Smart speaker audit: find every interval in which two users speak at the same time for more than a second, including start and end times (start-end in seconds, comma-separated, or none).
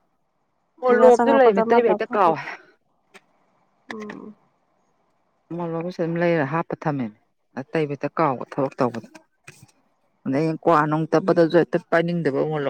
0.8-2.3